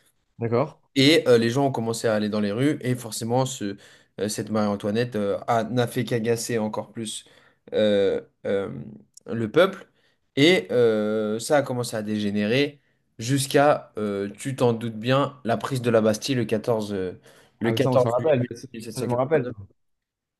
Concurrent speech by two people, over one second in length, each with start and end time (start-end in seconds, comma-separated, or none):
17.6-19.5